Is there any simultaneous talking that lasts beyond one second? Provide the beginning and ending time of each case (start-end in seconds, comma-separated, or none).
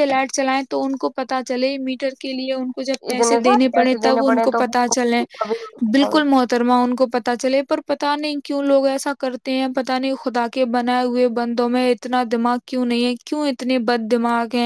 3.0-4.6